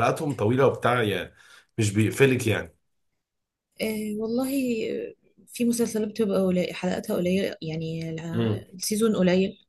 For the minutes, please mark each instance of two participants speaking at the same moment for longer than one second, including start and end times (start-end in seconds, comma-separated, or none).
none